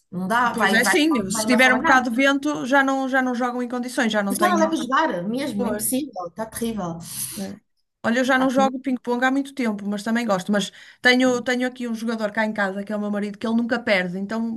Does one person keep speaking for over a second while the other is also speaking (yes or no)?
yes